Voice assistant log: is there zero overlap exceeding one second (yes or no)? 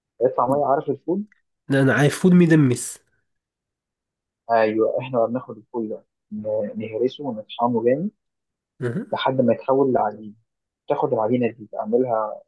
yes